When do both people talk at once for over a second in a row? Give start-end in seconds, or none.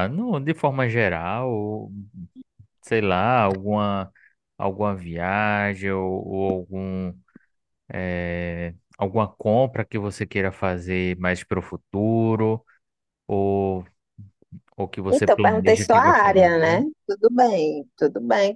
15.1-16.8